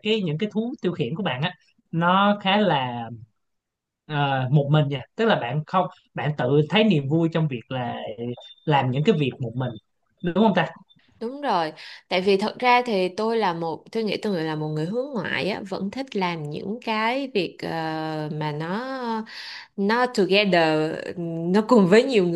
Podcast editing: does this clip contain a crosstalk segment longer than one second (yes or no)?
no